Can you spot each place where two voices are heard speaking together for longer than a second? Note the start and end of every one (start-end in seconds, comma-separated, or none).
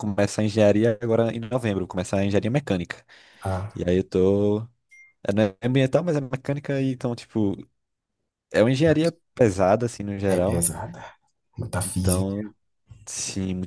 none